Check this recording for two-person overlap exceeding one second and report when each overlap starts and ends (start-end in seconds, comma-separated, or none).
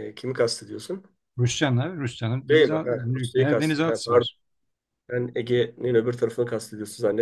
2.5-4.3